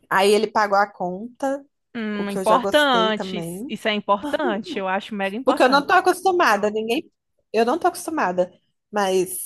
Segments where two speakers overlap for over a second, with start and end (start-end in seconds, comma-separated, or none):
2.1-3.7